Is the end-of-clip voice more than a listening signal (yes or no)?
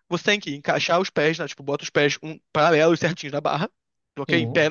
no